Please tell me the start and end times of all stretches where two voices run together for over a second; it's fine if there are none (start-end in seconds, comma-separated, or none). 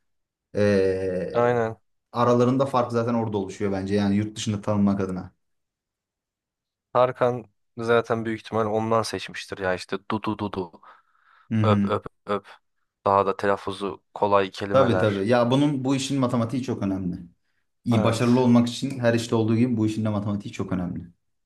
none